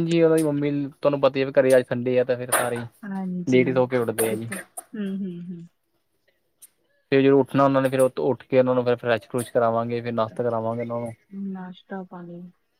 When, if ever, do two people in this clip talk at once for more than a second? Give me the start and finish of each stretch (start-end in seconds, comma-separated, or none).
none